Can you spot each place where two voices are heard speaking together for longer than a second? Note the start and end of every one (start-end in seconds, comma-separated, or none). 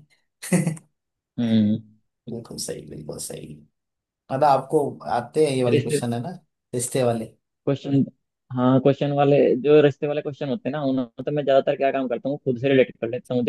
none